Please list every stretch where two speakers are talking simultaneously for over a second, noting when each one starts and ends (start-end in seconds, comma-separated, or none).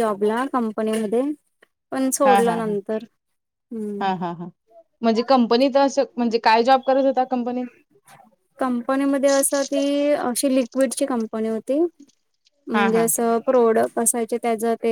none